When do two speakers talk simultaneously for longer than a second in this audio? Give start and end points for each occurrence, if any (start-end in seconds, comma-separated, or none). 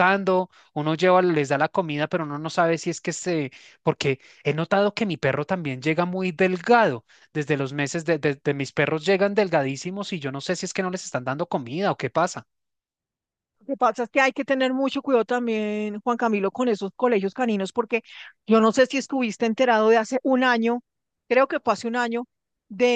none